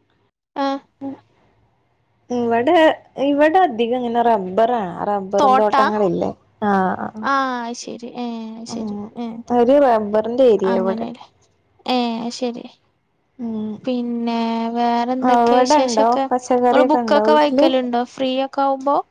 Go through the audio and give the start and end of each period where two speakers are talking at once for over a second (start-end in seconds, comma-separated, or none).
15.3-17.6